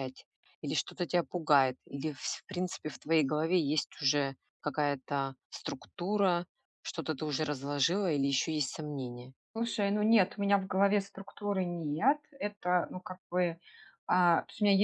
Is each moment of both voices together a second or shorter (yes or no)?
yes